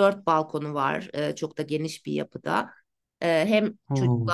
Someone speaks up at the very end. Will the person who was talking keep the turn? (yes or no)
yes